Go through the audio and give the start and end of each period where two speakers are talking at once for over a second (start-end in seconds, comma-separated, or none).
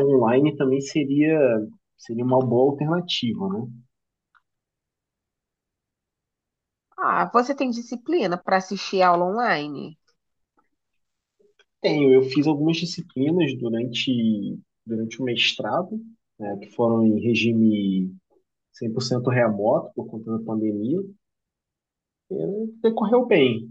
none